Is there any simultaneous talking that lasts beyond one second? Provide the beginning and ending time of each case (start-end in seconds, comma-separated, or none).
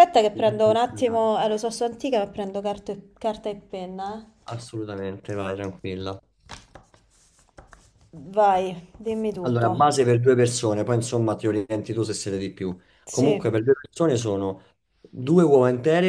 none